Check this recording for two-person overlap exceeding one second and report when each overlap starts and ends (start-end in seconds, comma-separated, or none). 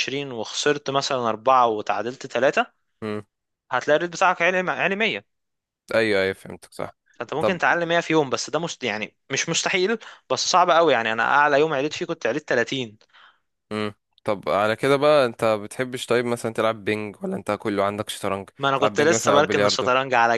18.6-19.9